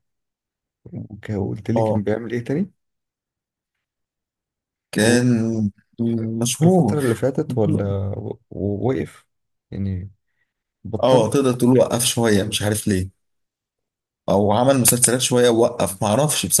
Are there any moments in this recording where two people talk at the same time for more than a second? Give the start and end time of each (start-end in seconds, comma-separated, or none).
none